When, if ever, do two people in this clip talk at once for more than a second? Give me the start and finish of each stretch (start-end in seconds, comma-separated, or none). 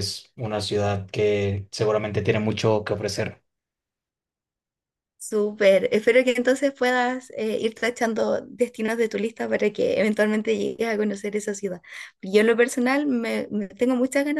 none